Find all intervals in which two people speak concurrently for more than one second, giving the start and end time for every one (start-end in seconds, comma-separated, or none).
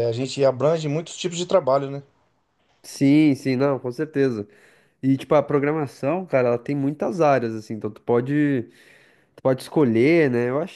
none